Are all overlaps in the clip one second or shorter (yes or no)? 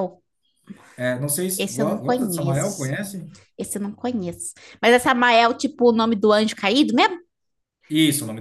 no